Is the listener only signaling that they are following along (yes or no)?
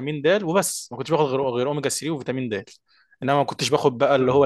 yes